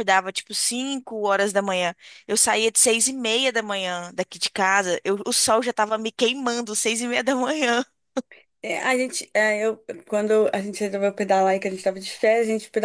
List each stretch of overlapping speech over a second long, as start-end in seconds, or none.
none